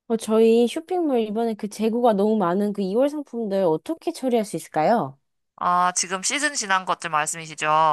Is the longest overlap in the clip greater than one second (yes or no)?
no